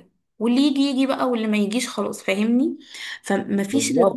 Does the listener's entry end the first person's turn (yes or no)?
no